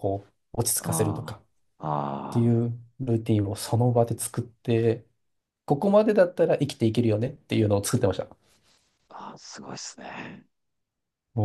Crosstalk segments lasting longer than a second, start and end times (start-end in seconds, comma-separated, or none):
none